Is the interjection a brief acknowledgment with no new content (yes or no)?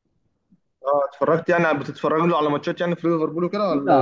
no